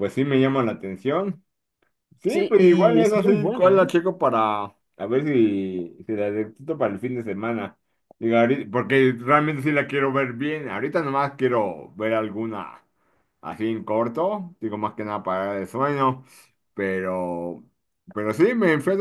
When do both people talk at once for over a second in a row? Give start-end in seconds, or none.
2.3-3.9